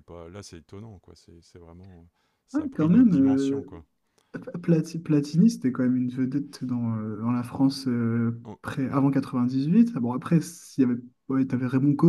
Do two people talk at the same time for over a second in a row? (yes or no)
yes